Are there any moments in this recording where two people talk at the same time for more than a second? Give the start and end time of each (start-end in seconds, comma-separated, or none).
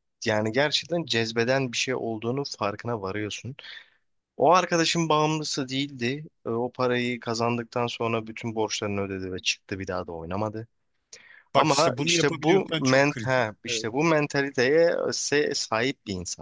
11.5-13.9